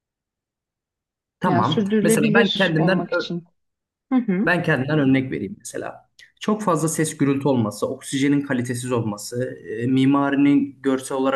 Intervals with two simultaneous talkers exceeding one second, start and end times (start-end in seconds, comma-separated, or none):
1.4-3.1